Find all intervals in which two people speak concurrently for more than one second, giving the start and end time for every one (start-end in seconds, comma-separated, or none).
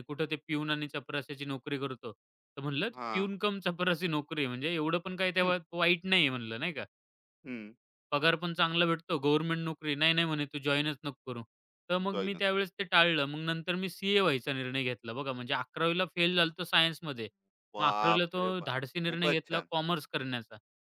17.8-19.7